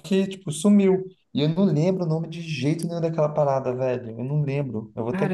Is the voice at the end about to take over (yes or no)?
yes